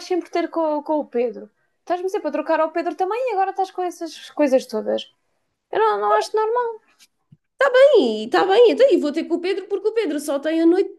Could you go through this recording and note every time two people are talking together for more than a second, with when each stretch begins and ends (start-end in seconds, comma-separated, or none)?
none